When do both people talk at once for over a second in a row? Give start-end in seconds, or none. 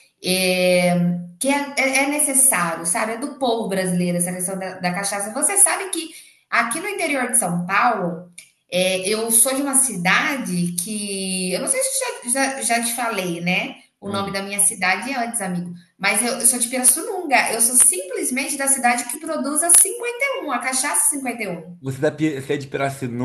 none